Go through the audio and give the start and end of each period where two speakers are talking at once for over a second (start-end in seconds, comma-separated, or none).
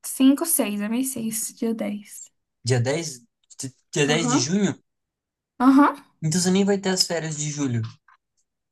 none